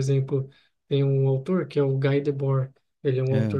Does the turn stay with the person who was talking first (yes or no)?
yes